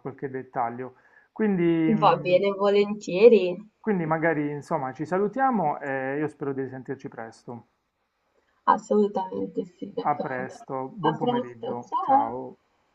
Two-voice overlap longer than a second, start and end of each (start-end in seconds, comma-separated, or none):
10.0-12.3